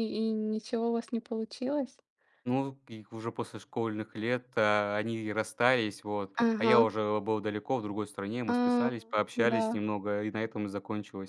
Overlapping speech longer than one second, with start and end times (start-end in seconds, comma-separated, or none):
none